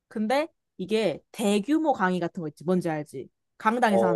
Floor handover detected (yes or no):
yes